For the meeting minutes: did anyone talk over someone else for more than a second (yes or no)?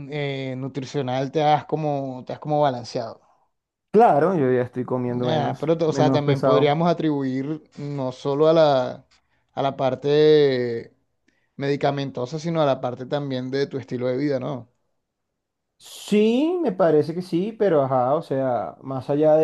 yes